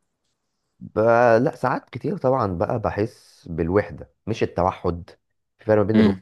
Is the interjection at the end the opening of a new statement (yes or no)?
no